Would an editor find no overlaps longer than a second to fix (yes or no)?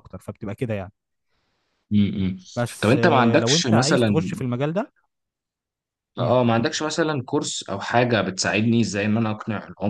no